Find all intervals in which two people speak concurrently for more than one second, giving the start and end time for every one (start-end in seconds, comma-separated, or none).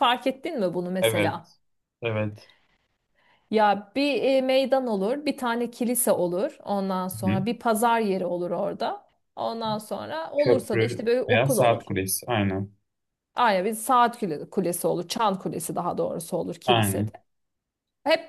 10.4-11.9